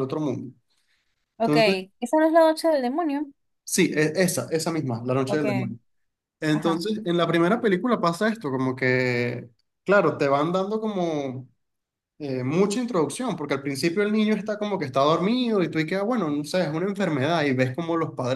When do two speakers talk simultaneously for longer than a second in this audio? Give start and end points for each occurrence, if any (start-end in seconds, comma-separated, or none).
none